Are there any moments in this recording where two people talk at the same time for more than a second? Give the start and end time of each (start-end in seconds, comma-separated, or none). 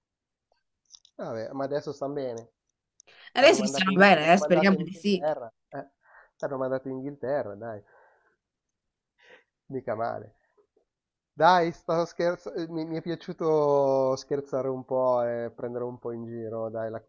3.4-5.2